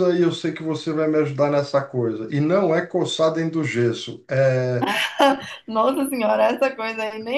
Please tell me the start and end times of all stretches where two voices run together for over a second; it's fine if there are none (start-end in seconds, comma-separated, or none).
none